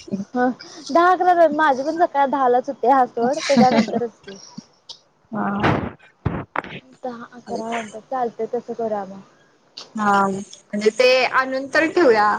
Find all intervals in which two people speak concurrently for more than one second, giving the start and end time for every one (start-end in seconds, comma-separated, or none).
none